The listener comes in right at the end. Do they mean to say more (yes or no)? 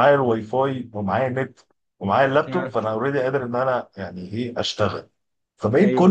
no